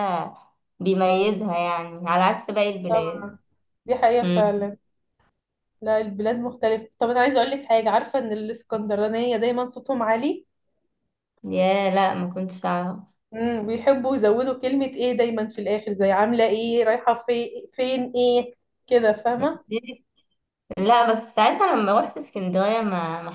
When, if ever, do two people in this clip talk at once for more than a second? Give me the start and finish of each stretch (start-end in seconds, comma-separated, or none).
none